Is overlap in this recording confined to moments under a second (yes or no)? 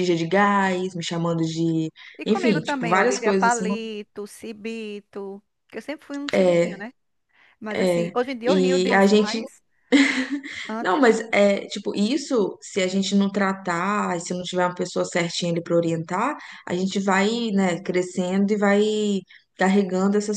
no